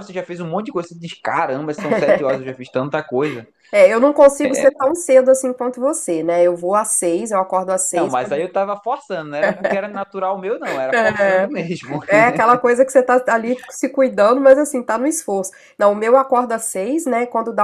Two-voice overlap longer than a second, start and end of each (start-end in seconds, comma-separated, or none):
none